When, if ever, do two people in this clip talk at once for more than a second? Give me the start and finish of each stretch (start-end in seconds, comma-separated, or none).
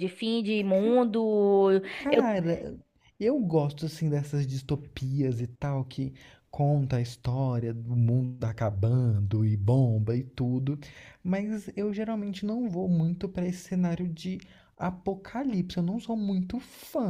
none